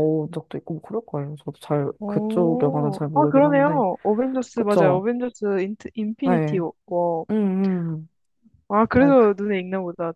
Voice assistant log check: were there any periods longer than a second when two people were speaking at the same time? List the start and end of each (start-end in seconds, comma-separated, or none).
2.0-3.8